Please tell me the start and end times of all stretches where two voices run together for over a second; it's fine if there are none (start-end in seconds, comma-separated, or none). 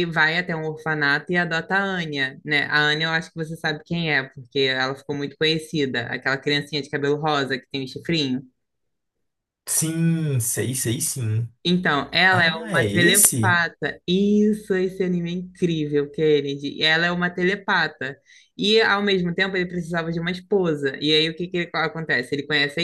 12.3-13.6